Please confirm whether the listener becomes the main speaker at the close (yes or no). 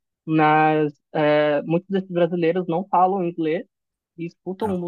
no